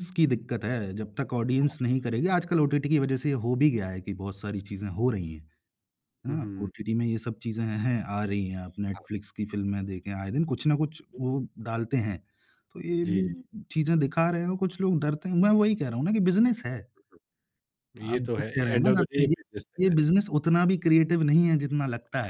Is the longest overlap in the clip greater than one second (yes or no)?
yes